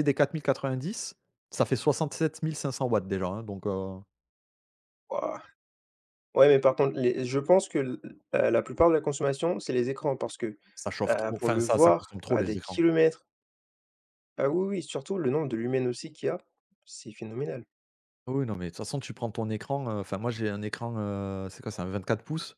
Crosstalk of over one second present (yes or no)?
yes